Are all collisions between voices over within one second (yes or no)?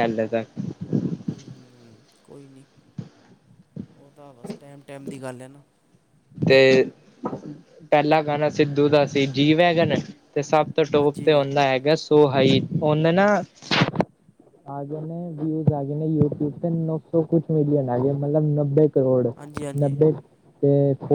yes